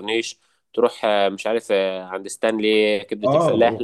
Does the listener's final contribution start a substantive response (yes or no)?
yes